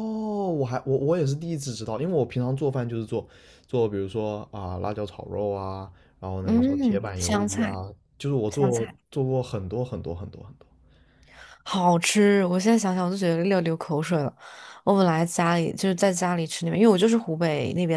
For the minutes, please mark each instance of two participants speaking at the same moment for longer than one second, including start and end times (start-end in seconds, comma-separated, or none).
6.4-7.8